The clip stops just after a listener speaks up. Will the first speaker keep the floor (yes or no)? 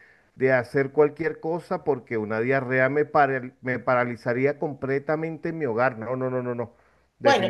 no